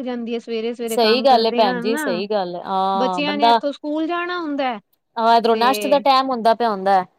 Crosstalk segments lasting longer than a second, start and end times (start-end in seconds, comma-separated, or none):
0.9-2.2